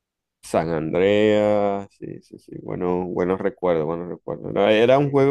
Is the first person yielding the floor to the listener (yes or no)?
no